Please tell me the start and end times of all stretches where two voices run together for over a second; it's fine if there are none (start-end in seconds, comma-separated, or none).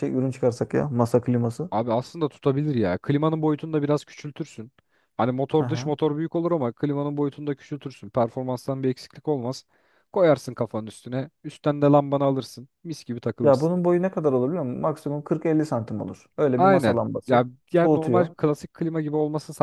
16.6-18.4